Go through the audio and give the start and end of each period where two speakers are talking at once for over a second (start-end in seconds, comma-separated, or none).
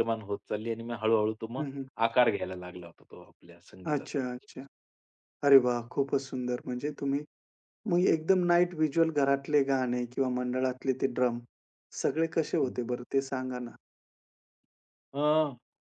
none